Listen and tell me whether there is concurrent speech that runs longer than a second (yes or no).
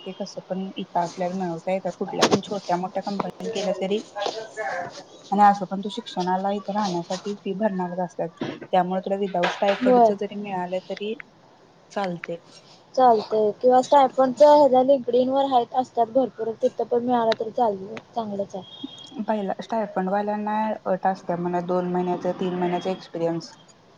no